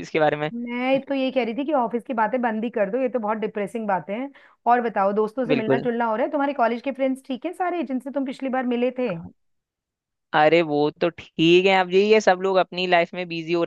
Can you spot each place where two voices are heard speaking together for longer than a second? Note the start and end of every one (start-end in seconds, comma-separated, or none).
none